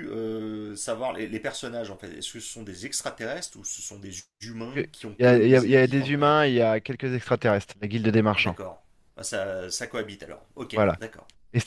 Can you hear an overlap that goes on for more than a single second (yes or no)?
yes